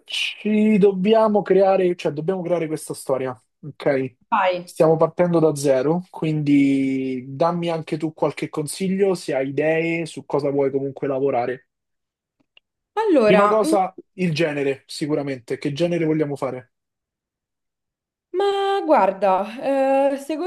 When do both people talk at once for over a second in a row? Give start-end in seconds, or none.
none